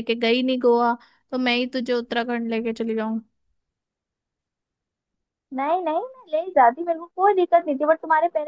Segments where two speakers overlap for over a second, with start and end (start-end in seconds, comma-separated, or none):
none